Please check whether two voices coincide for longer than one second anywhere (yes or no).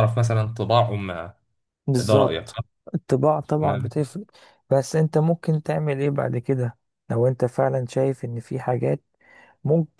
no